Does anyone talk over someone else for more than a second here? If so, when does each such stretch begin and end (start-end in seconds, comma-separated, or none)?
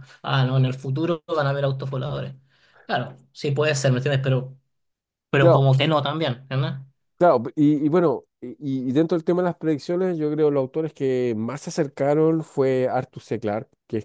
none